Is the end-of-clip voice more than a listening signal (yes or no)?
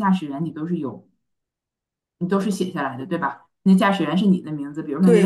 yes